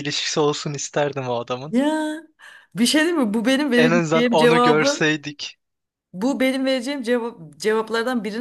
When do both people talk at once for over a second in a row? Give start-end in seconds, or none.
3.8-5.1